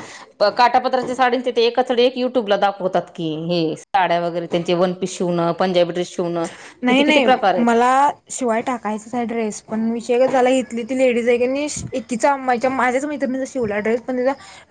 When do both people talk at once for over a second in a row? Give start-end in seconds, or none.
none